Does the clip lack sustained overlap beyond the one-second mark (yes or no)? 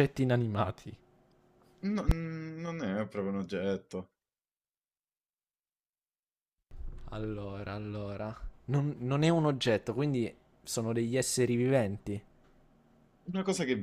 yes